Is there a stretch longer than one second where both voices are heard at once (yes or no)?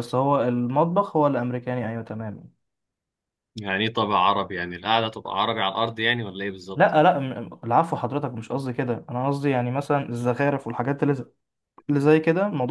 no